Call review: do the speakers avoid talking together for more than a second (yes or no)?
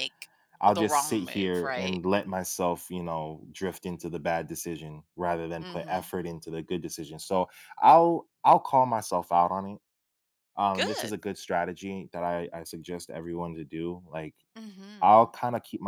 no